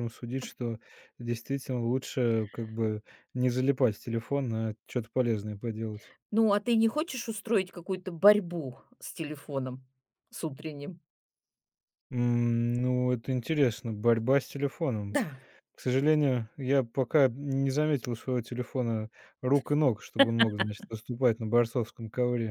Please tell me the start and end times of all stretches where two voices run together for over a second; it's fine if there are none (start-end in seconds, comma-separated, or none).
none